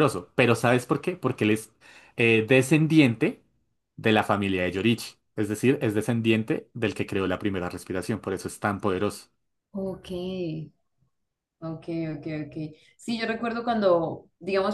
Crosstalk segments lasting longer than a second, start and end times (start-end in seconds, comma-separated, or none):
none